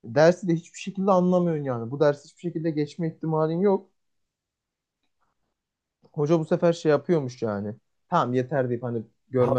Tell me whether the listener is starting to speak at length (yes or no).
yes